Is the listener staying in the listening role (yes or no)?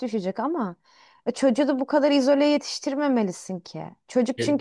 yes